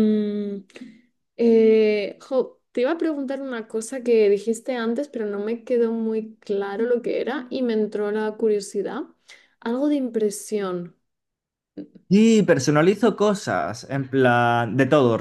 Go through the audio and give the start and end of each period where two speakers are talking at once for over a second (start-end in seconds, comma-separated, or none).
none